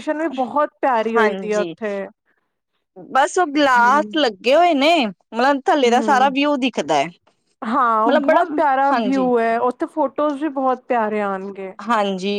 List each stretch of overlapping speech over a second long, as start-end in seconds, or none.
none